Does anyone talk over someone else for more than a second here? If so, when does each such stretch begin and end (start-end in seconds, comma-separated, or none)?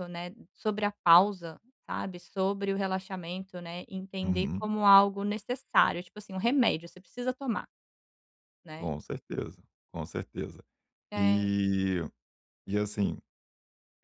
none